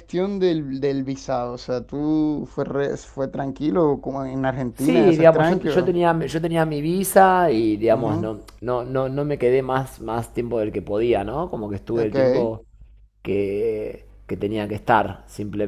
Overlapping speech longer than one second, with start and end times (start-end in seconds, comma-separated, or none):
4.7-6.0